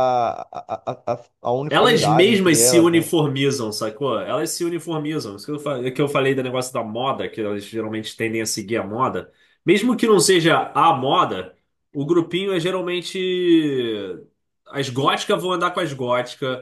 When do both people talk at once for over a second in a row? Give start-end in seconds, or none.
1.7-3.1